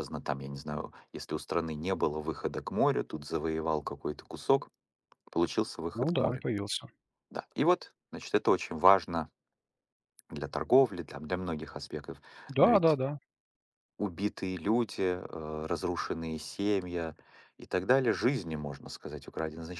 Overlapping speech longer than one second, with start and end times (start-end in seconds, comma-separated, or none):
none